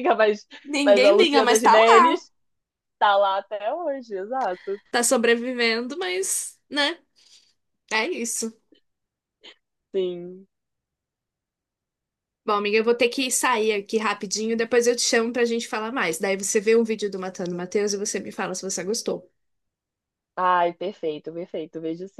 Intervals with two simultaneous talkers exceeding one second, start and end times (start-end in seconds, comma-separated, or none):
0.8-2.2